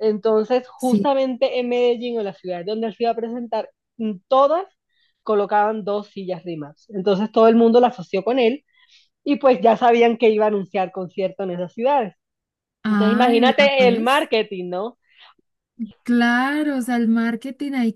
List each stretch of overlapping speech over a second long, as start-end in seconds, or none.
12.8-14.3